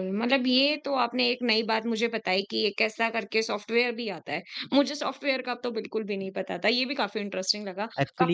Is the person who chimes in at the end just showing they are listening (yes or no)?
no